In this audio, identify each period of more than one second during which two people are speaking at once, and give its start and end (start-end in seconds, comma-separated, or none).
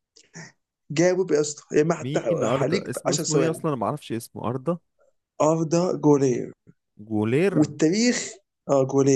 2.0-3.6